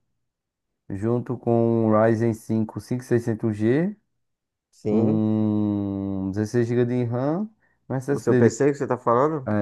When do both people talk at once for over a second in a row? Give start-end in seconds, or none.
none